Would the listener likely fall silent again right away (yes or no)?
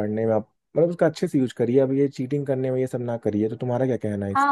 no